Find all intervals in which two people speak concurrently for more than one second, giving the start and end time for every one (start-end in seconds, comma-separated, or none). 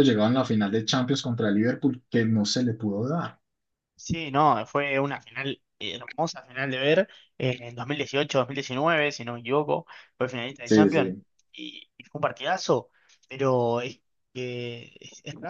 none